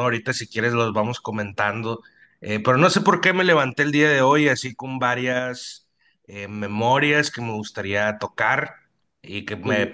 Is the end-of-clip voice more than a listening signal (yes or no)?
no